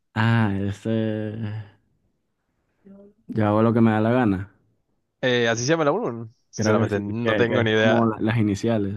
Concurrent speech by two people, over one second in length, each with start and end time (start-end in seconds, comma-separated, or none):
6.5-8.1